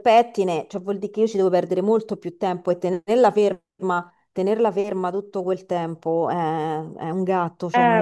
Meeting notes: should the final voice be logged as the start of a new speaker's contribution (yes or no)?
yes